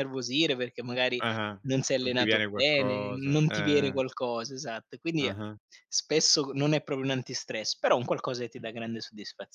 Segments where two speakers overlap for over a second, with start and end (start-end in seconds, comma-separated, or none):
2.0-4.0